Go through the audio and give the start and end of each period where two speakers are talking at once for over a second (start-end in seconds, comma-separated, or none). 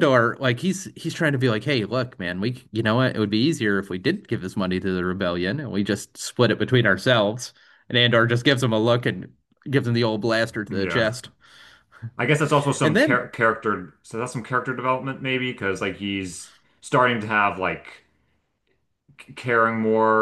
none